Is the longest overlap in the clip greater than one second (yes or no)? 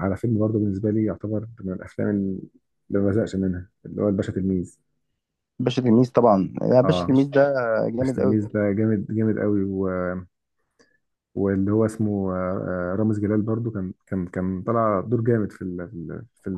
no